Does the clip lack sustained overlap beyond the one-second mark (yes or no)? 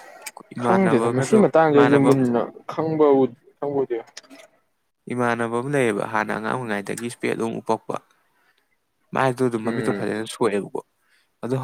no